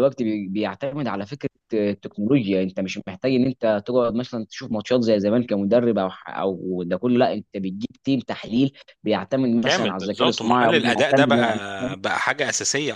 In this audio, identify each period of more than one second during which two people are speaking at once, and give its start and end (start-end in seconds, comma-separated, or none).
9.6-11.6